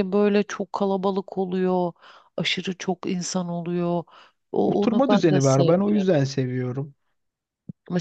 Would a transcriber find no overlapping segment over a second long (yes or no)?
no